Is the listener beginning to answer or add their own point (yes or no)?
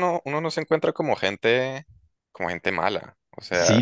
yes